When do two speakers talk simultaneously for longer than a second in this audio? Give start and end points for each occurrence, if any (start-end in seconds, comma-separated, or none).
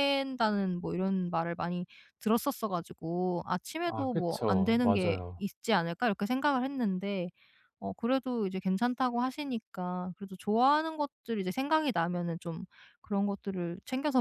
3.9-5.4